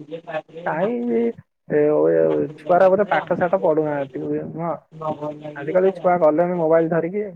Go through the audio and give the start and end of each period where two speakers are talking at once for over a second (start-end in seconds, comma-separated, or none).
2.3-4.2